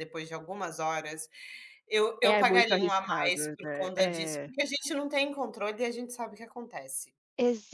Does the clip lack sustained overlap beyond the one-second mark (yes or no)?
no